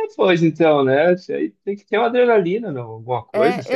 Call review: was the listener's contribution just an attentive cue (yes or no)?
no